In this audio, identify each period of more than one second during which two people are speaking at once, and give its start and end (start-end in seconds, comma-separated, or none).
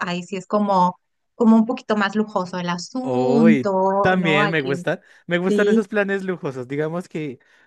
3.0-4.7